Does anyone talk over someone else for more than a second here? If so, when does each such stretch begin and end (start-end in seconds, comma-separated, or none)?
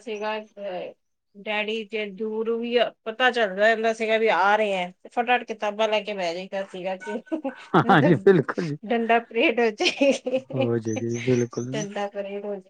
none